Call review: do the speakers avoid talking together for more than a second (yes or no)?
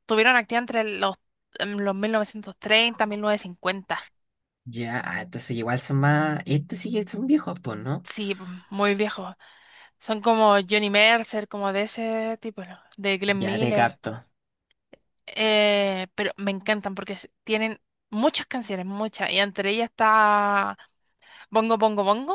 yes